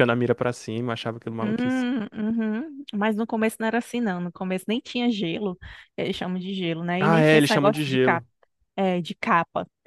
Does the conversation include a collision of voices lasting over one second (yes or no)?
yes